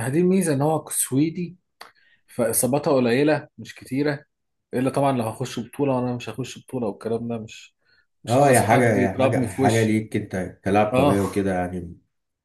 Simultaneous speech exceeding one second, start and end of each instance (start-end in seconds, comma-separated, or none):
8.3-10.0